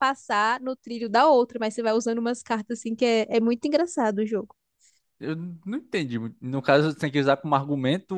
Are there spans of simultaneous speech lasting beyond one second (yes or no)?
no